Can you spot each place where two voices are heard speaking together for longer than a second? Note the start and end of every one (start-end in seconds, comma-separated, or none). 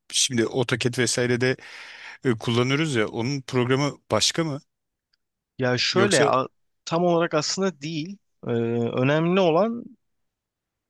none